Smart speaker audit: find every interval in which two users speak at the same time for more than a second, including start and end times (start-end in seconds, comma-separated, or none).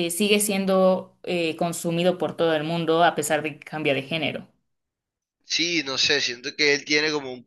none